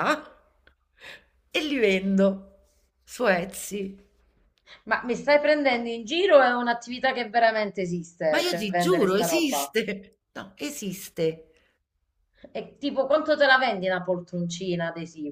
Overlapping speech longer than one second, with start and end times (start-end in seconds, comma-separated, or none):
8.3-9.7